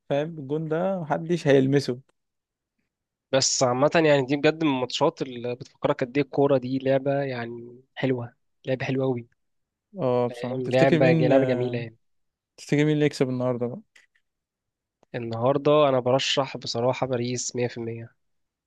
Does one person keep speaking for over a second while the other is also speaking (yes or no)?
yes